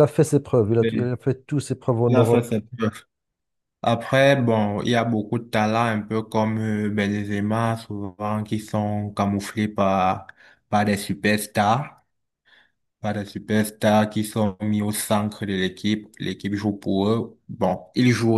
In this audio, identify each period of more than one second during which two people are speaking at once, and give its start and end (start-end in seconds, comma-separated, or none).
none